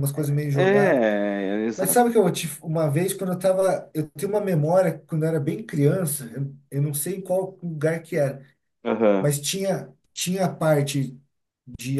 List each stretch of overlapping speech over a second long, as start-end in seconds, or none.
none